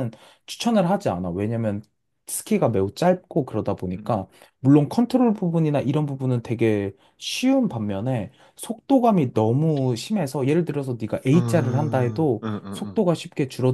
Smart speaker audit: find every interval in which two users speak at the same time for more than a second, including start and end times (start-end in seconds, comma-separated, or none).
11.3-13.0